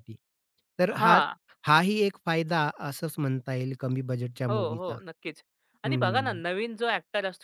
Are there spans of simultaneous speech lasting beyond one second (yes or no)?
no